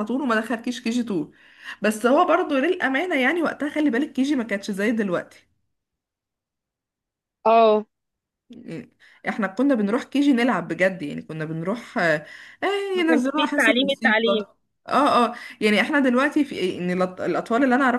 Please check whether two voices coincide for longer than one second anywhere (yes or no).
yes